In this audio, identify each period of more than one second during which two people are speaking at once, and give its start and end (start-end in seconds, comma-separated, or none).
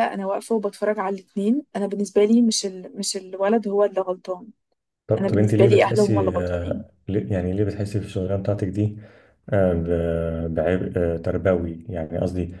5.2-6.8